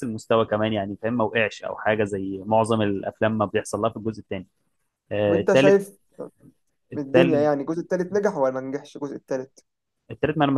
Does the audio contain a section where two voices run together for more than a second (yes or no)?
no